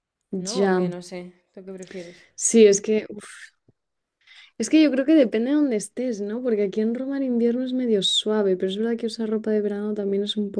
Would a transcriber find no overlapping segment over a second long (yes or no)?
yes